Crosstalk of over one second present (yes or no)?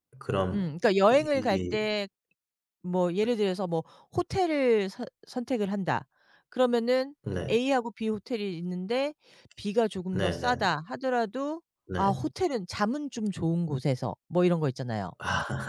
yes